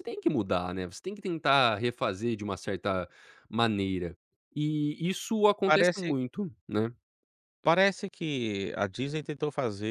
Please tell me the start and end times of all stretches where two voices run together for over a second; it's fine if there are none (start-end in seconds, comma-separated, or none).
none